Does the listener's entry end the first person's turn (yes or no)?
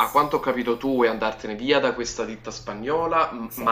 no